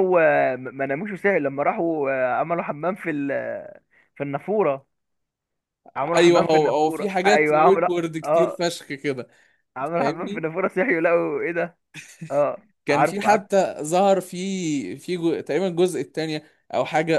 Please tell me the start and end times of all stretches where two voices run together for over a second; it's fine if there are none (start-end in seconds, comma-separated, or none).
6.2-8.6